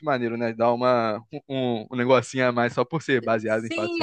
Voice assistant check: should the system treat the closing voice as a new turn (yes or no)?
yes